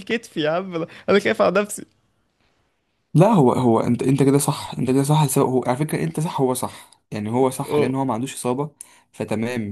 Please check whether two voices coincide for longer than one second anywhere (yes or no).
no